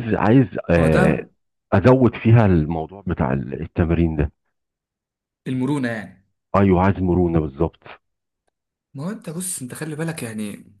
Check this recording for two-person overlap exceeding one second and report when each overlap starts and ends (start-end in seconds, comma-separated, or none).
none